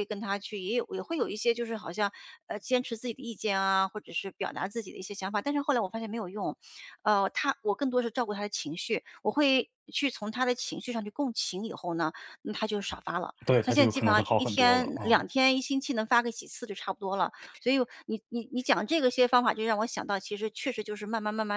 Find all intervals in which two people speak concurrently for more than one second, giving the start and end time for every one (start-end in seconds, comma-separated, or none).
13.5-15.2